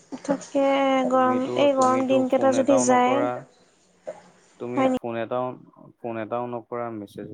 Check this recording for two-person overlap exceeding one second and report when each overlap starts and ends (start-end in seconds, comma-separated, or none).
1.1-3.1